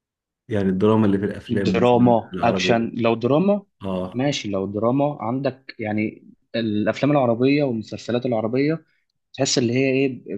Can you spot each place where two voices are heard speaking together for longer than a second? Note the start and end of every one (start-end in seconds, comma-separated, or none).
1.5-2.9